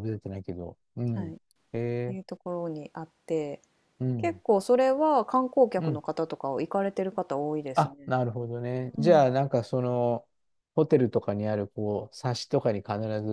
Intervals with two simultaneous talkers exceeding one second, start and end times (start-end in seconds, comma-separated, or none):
none